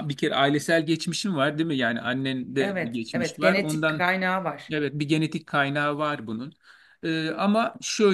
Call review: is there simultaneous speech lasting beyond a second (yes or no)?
yes